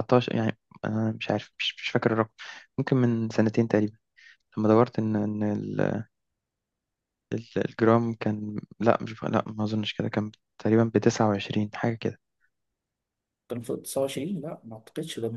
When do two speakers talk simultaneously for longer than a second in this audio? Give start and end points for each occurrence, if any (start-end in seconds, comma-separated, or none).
none